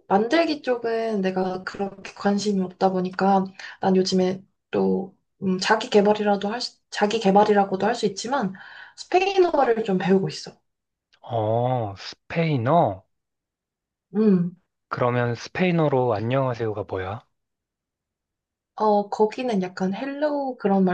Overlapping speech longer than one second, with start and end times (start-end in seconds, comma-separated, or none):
none